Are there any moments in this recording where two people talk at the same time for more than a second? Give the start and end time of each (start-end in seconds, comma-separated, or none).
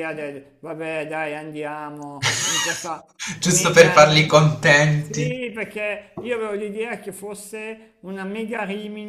none